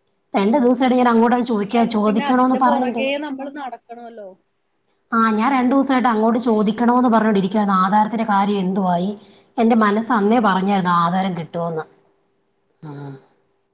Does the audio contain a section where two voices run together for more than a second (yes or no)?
yes